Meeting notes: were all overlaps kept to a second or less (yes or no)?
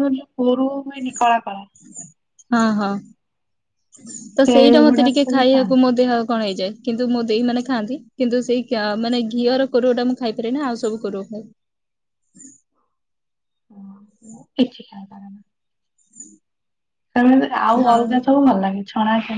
no